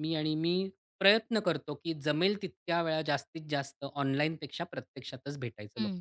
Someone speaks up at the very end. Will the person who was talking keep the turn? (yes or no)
no